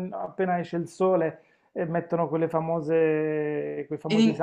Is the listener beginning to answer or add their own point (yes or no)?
no